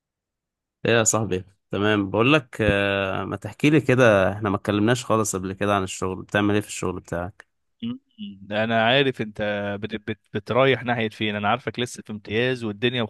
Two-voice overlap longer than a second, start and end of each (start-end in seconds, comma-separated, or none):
none